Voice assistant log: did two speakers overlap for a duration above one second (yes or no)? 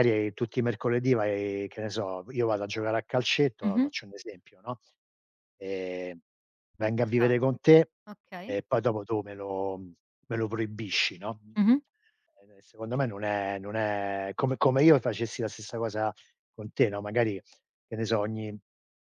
no